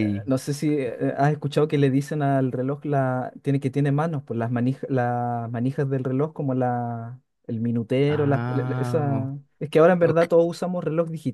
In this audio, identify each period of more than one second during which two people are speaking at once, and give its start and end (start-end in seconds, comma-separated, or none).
8.1-9.3